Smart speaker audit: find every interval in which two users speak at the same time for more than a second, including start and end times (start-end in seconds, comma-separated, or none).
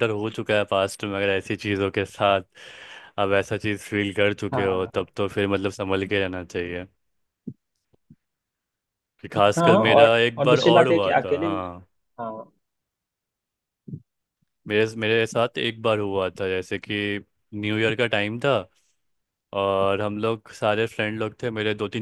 9.3-11.5